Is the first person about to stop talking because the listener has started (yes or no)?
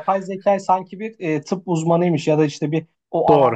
no